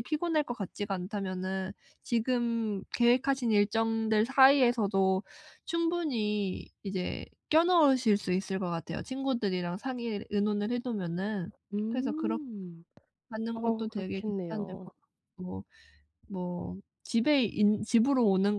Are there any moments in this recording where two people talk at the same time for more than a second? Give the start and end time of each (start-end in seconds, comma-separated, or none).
13.5-14.9